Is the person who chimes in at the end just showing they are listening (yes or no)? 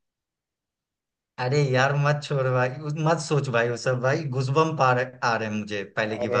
no